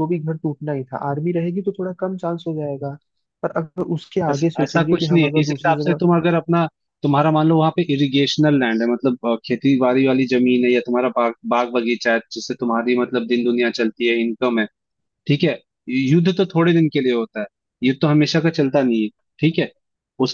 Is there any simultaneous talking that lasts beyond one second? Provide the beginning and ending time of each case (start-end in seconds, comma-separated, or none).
4.3-6.0